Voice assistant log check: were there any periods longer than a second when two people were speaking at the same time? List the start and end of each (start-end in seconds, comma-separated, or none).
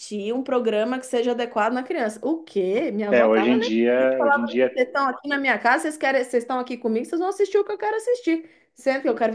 3.1-4.7